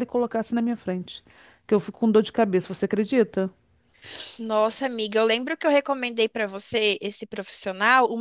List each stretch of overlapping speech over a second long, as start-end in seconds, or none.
none